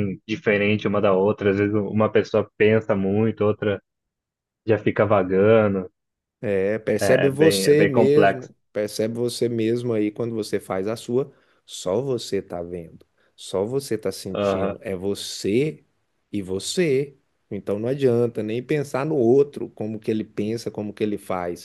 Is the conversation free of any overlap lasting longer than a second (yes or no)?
no